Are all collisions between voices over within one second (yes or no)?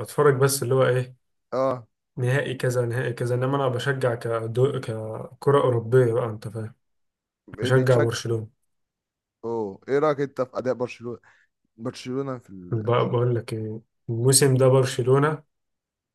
yes